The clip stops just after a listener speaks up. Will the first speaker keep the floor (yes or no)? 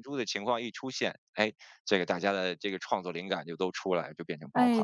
no